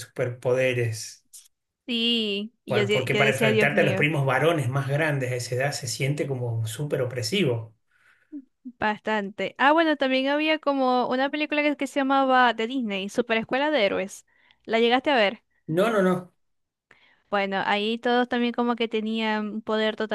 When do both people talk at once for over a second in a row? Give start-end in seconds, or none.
2.7-4.1